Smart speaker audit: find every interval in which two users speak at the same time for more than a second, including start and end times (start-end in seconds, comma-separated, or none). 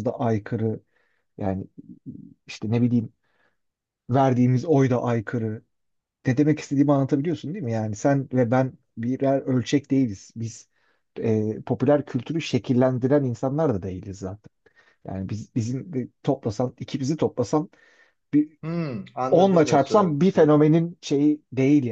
19.3-20.6